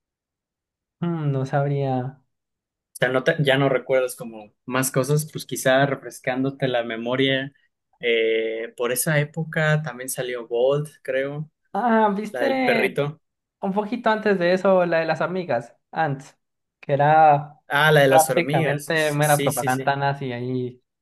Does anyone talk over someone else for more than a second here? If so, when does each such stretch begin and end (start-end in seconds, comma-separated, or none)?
18.1-19.9